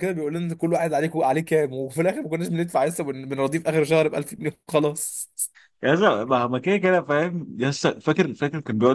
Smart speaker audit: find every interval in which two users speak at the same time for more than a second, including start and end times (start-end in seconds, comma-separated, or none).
none